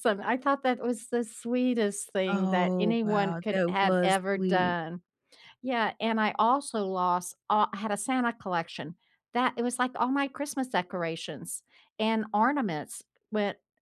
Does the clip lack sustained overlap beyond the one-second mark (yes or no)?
no